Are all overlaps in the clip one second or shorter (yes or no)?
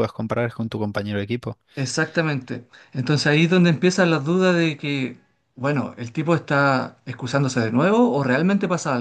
yes